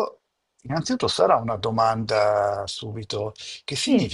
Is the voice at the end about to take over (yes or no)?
no